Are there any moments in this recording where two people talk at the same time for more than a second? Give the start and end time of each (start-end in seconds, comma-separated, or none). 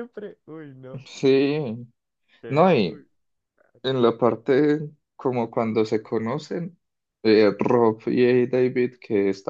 none